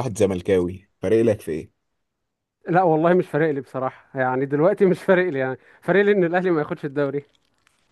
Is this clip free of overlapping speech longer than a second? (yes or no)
yes